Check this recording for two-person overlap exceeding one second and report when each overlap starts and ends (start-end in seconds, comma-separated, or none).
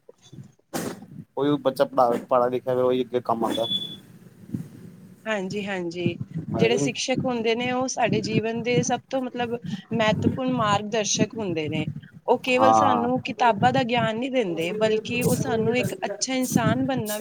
none